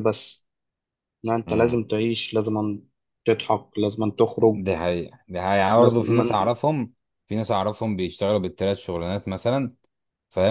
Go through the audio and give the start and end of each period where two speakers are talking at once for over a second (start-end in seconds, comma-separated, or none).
none